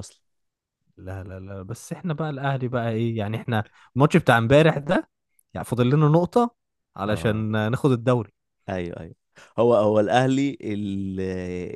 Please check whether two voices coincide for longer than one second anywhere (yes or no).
no